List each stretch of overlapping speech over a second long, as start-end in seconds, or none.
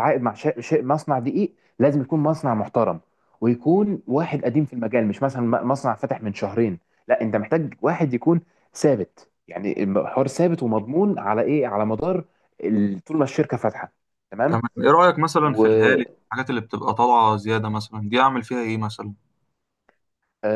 none